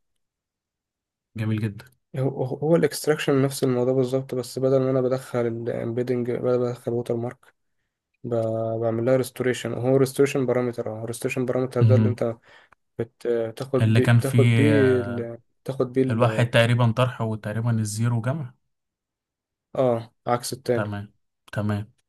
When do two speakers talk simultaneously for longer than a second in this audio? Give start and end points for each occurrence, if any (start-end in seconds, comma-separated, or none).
13.8-15.2